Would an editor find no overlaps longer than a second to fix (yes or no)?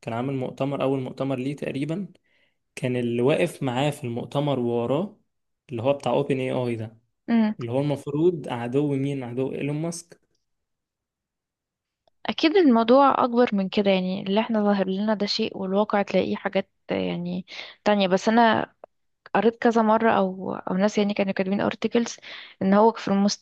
yes